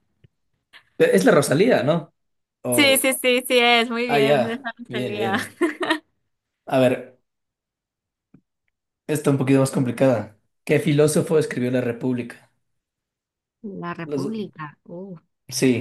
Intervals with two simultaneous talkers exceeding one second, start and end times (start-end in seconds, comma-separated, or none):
4.1-5.3